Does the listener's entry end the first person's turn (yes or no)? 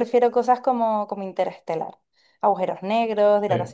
no